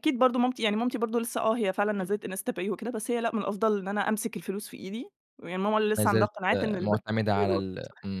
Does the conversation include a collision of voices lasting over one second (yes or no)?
yes